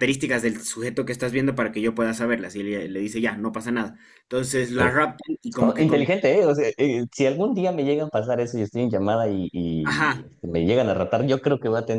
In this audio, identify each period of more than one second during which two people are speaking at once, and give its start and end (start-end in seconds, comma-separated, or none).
none